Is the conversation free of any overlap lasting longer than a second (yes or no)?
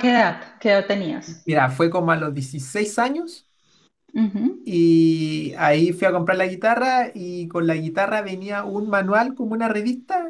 yes